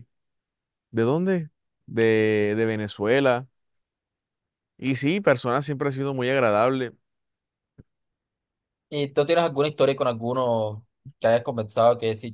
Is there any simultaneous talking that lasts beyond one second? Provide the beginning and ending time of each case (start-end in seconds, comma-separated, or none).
none